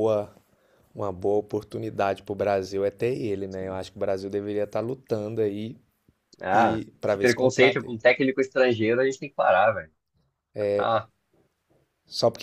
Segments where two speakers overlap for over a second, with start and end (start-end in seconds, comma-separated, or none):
6.5-7.9